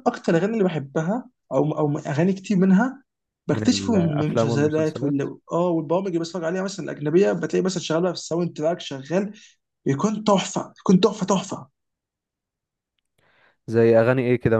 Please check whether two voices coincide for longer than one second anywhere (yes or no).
yes